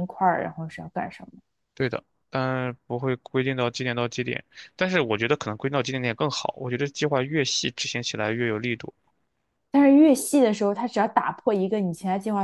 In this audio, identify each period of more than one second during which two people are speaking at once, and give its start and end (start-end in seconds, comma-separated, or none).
none